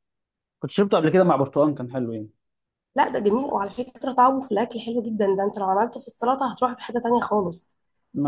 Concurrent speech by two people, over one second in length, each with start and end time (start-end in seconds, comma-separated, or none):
none